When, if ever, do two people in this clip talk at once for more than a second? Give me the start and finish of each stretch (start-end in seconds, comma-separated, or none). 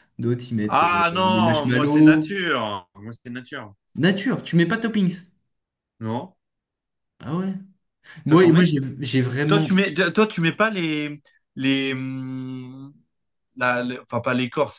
0.7-2.3